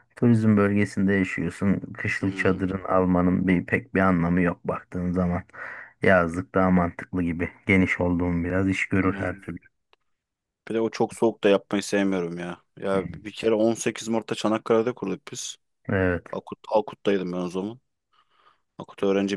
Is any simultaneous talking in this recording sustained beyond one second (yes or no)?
no